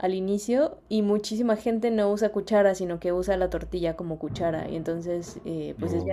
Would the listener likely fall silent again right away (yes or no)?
yes